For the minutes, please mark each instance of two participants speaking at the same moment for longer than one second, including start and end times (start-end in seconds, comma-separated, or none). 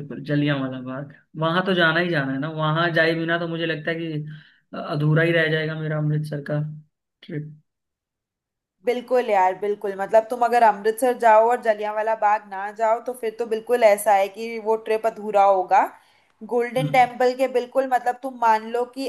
none